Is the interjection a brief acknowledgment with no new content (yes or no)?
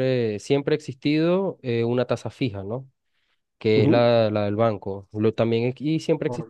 yes